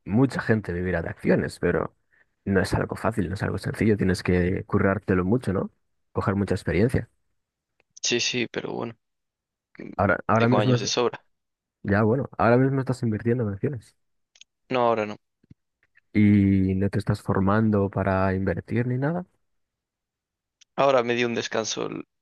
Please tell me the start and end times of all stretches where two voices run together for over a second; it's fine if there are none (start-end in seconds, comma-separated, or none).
none